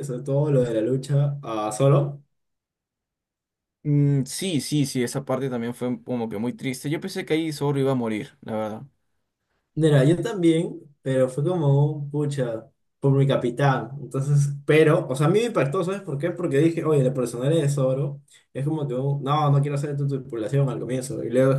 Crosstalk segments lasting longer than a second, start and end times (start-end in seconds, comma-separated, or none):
none